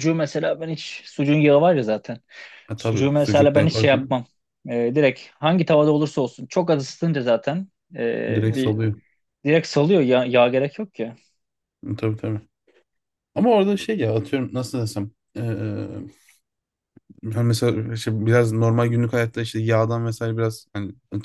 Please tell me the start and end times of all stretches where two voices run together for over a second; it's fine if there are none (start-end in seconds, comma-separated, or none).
2.8-4.2